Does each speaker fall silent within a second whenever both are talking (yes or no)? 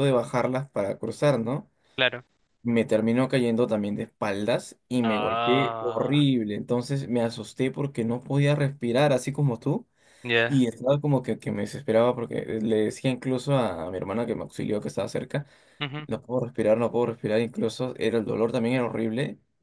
no